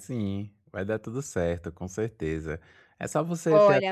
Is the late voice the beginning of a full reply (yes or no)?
yes